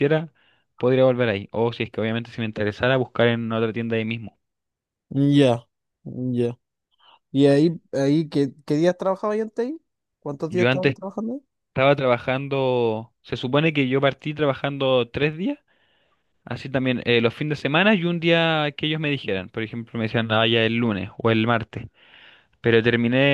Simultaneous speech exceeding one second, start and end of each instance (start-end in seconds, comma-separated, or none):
none